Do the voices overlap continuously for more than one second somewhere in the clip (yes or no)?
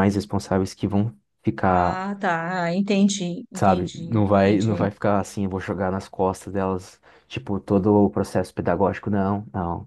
yes